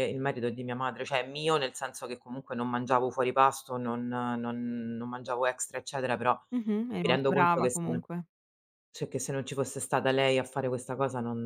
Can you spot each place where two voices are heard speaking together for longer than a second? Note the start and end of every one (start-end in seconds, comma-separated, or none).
6.5-8.0